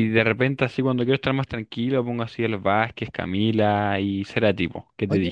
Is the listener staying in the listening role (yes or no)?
no